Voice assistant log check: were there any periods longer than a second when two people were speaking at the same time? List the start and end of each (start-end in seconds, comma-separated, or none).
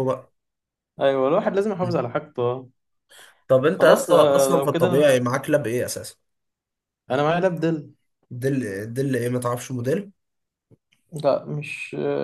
3.7-5.2